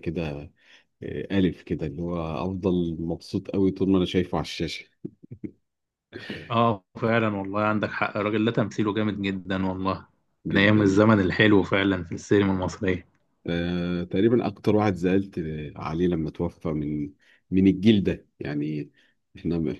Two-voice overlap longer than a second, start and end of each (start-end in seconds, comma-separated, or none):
none